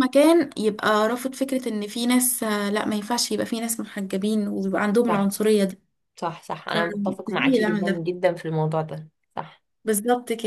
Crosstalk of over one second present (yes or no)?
yes